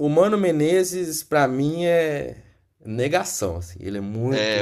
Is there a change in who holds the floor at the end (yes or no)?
yes